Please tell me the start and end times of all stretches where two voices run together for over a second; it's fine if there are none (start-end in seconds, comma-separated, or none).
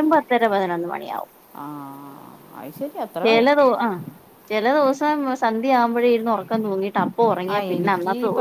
none